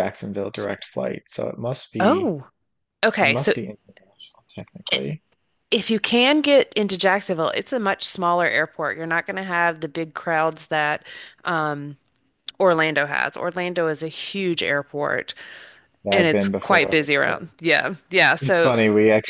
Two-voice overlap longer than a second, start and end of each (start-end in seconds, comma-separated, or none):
16.1-17.4